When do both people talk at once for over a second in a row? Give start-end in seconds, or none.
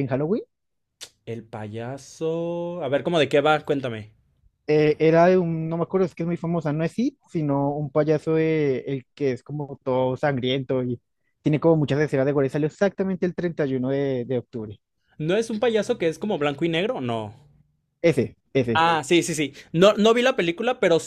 none